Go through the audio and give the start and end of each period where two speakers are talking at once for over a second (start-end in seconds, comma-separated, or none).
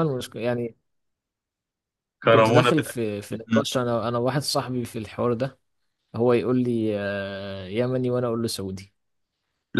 2.3-3.7